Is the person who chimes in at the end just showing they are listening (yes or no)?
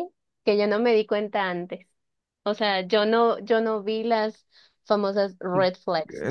no